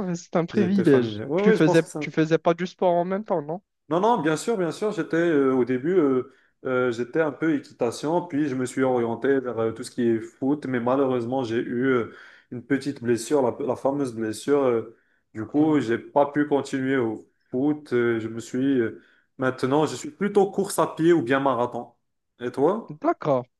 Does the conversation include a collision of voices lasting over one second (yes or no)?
yes